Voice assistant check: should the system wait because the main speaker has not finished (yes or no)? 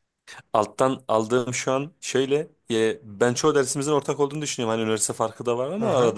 yes